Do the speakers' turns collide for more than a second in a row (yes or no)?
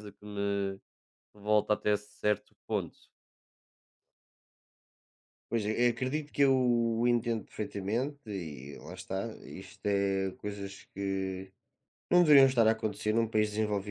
no